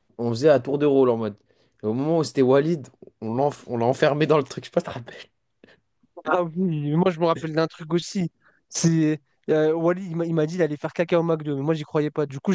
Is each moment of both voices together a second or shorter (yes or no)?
yes